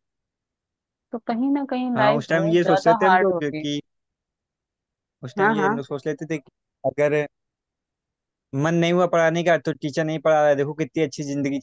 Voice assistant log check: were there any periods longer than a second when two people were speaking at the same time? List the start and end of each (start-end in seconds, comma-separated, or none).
1.9-3.6